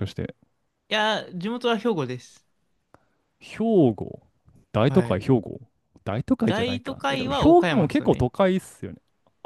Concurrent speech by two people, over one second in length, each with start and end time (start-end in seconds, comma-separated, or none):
6.4-8.3